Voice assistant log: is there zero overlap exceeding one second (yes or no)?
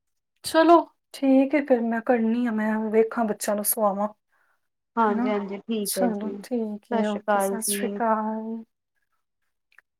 no